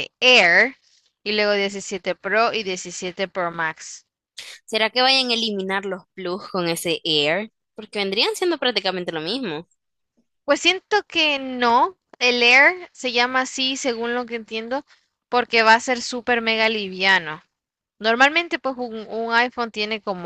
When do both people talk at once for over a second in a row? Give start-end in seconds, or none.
none